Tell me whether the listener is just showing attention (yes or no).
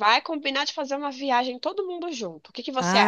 no